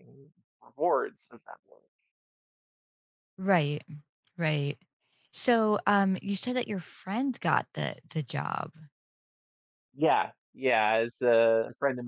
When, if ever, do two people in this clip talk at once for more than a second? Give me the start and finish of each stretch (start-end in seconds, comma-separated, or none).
none